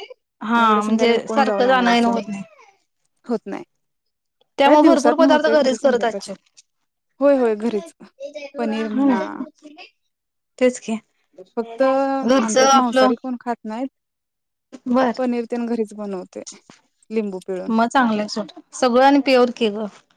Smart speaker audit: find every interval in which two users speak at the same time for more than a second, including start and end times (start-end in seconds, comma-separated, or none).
0.6-2.2, 4.6-6.3, 11.6-13.1